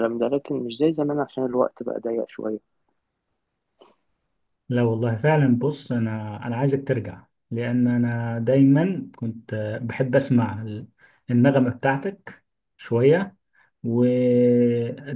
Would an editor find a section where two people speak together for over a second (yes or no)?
no